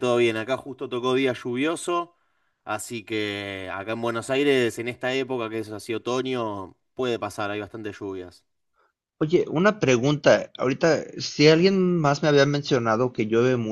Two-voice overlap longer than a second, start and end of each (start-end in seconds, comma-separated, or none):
none